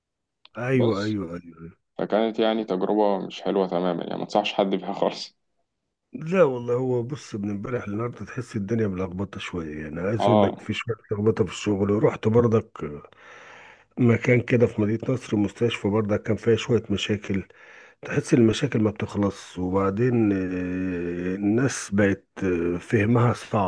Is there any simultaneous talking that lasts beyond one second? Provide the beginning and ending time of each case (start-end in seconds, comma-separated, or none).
none